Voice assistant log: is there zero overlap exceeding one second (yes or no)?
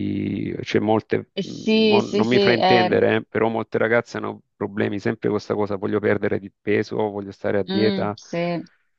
no